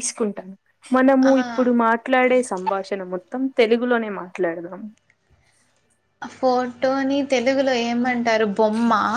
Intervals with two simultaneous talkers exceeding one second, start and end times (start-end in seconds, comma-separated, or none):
none